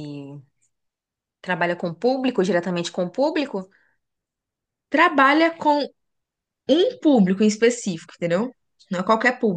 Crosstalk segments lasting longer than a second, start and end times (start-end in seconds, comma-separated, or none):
none